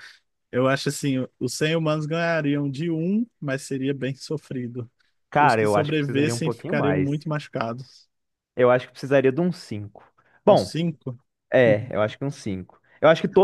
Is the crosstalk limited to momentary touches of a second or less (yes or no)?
no